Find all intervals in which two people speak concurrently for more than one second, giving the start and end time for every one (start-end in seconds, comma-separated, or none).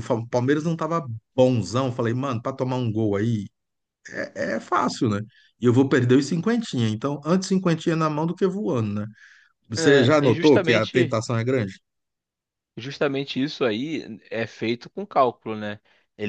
9.8-11.2